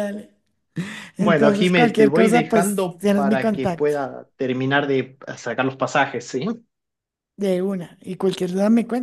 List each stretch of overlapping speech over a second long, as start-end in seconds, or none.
1.2-3.9